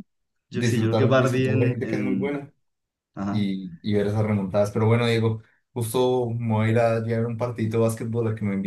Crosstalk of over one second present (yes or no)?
yes